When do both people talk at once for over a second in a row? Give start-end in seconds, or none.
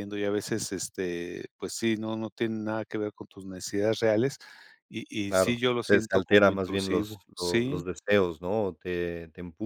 5.3-7.8